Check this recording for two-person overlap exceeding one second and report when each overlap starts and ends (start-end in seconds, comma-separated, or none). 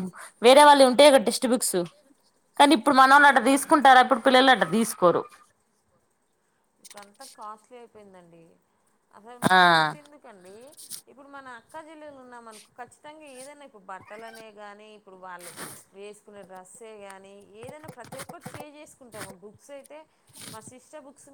none